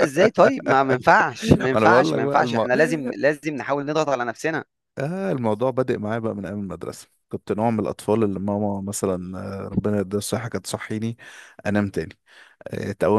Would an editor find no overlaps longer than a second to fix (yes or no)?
no